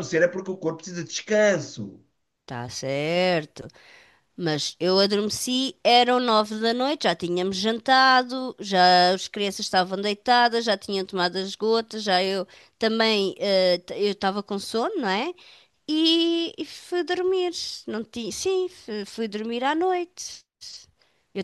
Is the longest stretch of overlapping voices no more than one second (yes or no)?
yes